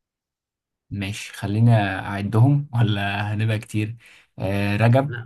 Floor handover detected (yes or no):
no